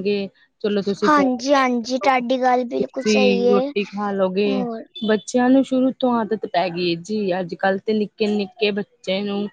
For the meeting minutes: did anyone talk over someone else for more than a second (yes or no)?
yes